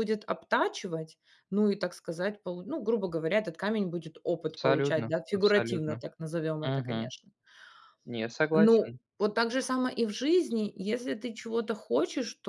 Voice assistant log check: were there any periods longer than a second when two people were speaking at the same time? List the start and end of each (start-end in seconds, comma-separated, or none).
4.6-6.0